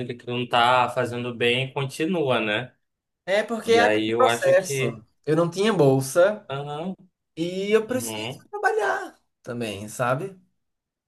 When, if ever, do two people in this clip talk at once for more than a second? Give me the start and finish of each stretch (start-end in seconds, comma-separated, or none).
3.7-5.0